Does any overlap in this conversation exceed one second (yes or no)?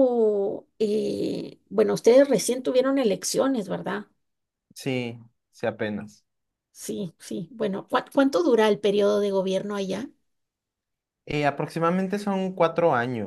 no